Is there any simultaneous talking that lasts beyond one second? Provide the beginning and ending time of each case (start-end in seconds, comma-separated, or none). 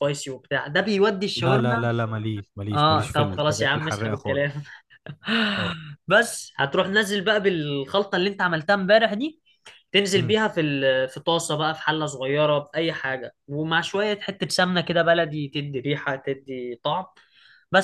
2.7-4.5